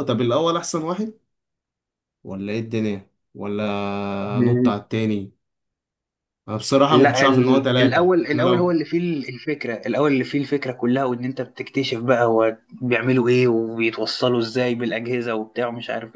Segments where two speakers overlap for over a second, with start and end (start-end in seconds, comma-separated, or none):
6.9-8.8